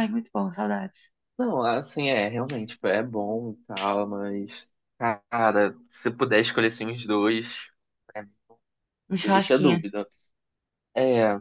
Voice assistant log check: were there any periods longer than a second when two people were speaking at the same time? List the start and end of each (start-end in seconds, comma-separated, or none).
none